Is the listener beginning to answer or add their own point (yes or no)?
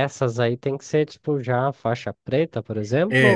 yes